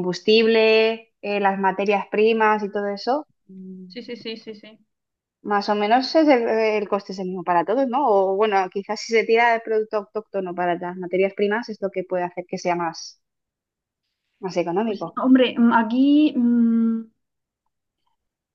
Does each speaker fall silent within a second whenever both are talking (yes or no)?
yes